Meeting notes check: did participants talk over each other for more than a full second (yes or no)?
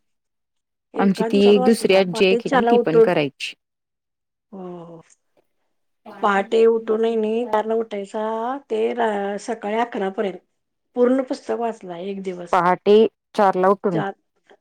yes